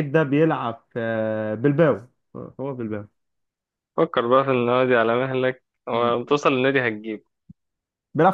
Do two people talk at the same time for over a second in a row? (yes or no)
no